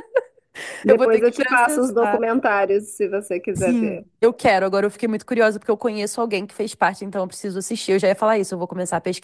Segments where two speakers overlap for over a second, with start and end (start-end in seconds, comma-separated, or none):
0.9-2.2